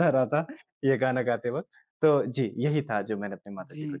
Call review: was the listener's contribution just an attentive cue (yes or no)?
no